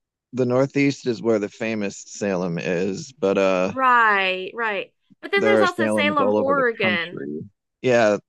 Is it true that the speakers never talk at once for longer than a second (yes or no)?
no